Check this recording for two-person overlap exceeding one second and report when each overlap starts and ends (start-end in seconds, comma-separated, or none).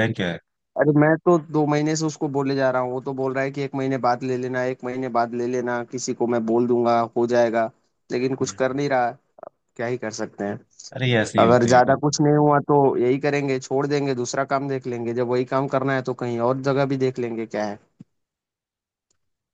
none